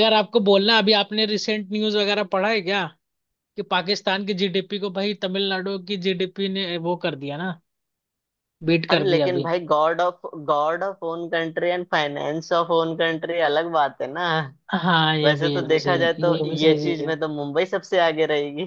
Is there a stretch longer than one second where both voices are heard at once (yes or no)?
yes